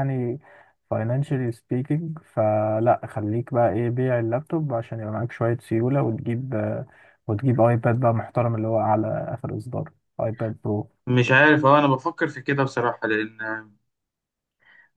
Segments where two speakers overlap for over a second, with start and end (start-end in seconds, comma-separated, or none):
none